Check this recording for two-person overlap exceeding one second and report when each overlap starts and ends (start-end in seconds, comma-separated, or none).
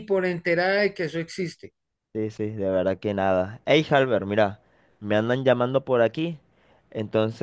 none